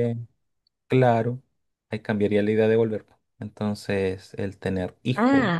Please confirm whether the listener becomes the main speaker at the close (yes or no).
yes